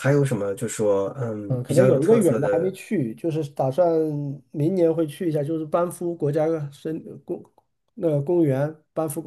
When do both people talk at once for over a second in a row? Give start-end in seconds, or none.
1.5-2.7